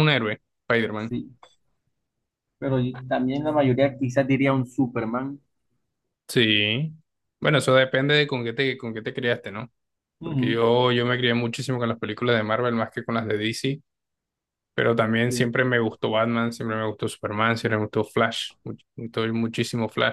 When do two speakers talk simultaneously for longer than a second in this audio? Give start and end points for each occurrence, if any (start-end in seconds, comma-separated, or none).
none